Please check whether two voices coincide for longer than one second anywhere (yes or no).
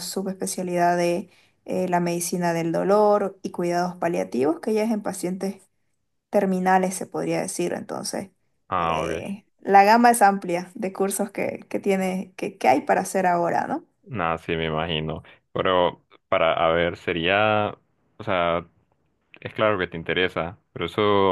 no